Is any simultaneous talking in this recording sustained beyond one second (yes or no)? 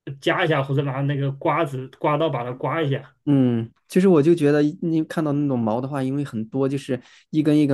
no